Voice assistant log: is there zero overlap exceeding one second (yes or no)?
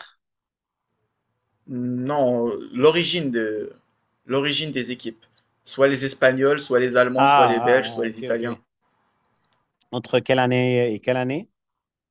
no